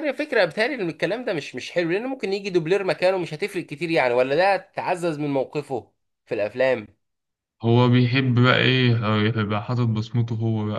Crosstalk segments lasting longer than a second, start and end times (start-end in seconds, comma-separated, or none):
none